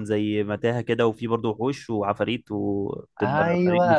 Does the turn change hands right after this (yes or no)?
yes